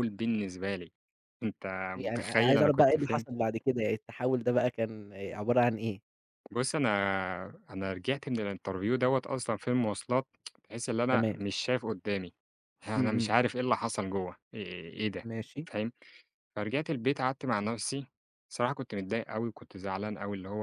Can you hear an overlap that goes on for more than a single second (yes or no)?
yes